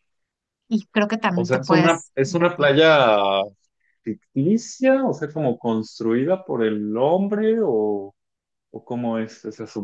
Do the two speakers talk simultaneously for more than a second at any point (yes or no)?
yes